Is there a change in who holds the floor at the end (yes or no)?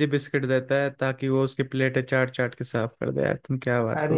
yes